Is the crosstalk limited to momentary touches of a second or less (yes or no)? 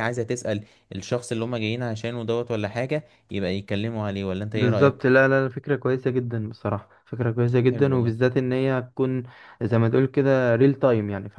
yes